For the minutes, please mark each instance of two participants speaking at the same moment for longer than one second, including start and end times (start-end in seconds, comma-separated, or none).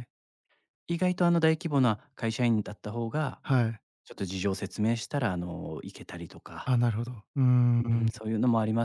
none